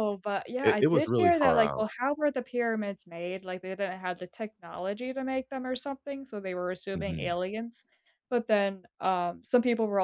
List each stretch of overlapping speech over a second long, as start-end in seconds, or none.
0.6-1.9